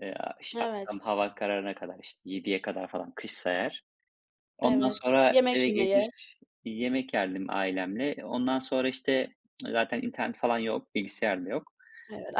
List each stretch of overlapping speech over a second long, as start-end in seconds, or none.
4.6-6.1